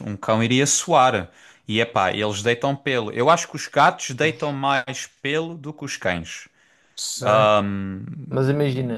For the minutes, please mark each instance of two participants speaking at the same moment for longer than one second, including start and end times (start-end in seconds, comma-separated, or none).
none